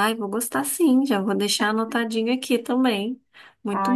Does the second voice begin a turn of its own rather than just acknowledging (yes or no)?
yes